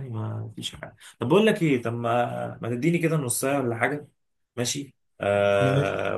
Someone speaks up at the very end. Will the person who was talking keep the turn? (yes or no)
yes